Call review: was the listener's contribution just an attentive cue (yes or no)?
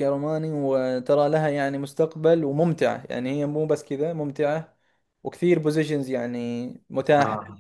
yes